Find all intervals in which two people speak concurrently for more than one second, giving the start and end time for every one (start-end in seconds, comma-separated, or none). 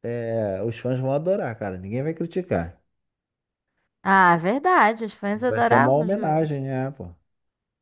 5.3-6.6